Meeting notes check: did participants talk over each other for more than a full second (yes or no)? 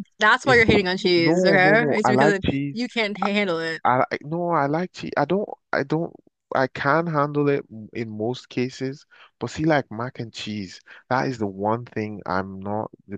yes